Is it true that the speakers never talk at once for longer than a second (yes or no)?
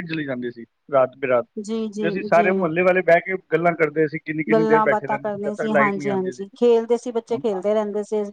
no